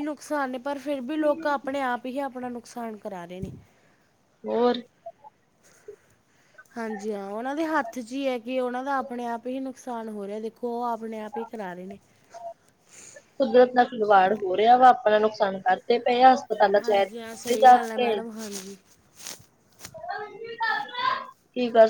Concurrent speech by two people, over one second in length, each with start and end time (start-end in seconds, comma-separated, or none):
none